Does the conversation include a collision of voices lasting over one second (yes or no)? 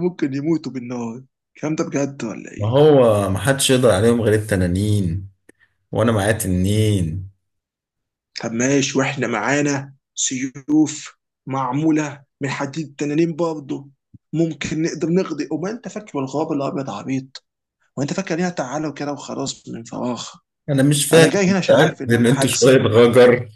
yes